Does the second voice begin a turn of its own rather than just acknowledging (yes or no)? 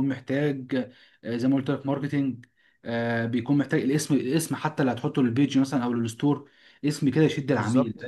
no